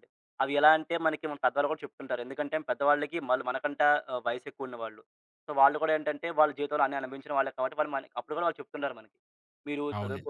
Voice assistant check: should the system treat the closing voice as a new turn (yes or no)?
no